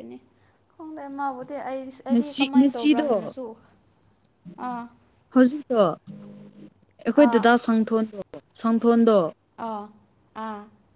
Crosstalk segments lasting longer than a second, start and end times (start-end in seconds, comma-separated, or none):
2.1-3.3